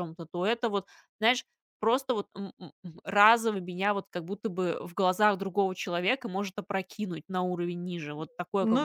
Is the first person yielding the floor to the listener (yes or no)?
yes